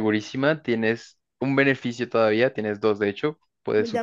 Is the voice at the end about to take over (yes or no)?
yes